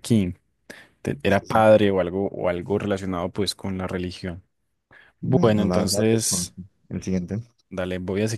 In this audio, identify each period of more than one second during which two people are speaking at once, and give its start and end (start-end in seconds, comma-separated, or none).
5.2-6.5